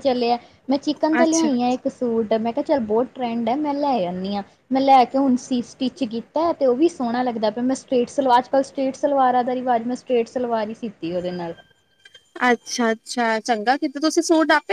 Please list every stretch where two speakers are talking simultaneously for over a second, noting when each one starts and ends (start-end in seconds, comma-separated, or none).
none